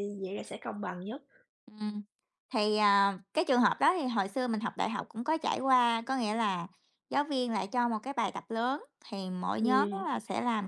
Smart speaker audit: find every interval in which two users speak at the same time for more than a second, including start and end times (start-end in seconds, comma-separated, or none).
none